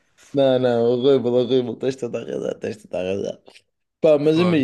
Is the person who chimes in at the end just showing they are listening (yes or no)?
yes